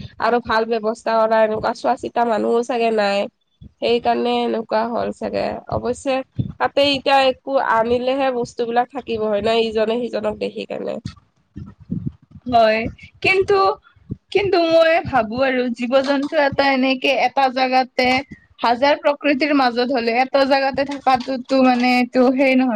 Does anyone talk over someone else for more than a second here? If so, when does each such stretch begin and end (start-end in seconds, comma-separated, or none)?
none